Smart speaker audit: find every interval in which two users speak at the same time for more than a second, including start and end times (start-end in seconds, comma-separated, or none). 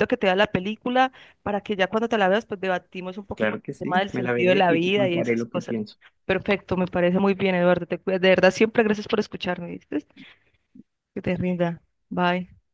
3.4-5.8